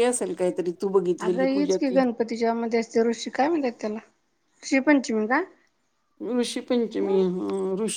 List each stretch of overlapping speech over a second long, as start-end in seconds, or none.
none